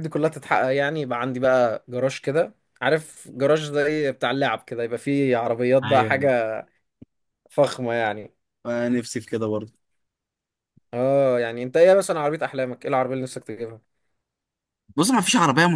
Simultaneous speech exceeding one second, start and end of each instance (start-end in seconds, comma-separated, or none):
none